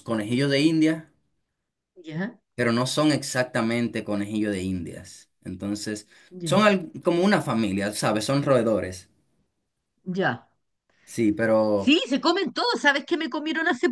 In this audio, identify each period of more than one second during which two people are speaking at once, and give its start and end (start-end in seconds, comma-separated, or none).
none